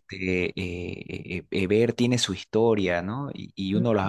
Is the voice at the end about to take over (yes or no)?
no